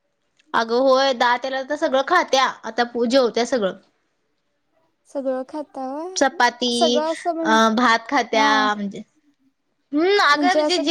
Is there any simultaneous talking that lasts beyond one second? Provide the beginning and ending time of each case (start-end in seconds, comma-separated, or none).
none